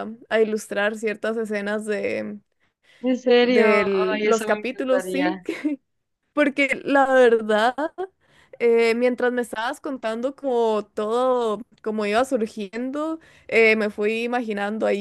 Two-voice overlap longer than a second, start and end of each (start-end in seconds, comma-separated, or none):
3.4-5.4